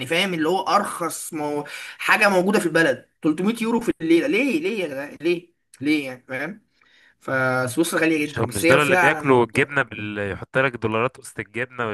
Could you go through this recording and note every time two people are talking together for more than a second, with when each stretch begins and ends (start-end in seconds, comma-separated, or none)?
8.2-9.5